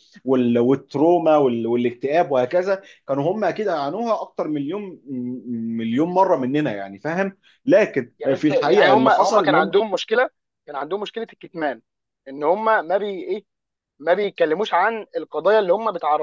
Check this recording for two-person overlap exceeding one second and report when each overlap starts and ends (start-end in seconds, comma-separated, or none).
8.2-9.7